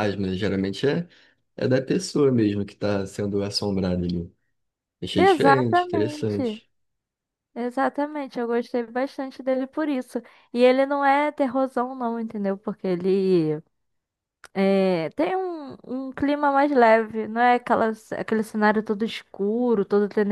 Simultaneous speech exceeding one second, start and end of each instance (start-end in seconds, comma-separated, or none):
5.2-6.6